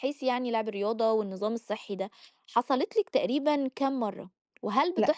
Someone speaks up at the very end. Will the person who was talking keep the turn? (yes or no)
yes